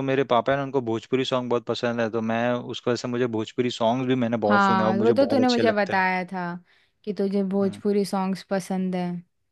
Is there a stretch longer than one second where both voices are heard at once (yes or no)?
yes